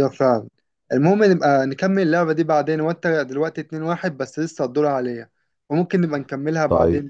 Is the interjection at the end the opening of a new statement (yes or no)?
yes